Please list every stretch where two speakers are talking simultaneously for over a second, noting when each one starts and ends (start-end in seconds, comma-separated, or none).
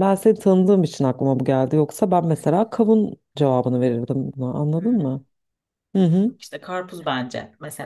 none